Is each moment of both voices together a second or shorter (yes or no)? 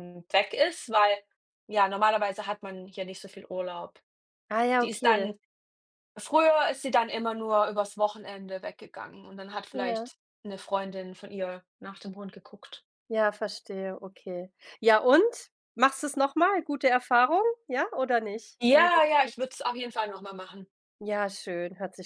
yes